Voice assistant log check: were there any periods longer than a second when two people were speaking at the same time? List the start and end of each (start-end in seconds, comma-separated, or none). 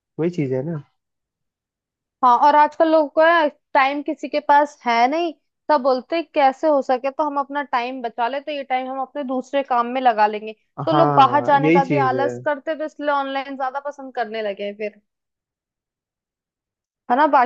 10.9-12.3